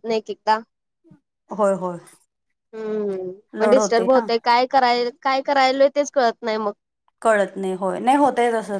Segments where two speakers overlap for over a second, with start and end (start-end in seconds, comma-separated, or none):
none